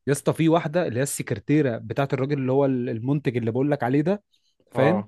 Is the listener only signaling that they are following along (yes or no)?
yes